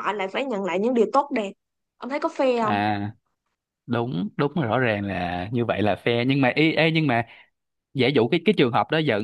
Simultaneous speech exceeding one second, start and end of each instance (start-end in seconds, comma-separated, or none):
none